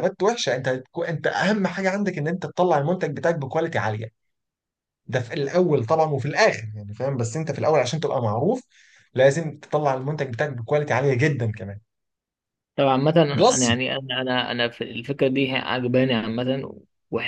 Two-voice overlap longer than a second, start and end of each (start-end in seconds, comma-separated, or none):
none